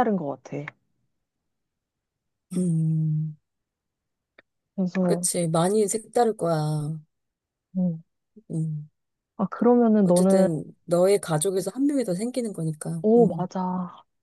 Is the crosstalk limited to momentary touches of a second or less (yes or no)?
yes